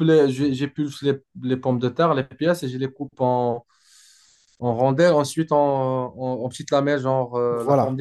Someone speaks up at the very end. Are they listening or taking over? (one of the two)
taking over